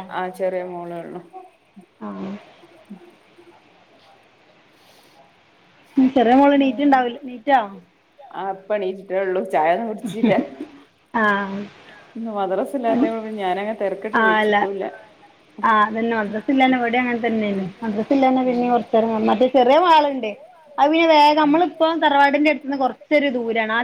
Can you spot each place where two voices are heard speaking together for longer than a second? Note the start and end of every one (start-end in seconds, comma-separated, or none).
none